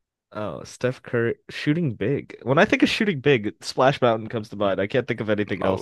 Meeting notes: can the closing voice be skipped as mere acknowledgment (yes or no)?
no